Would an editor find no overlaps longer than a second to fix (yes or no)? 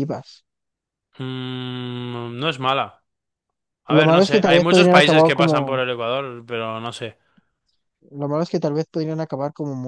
no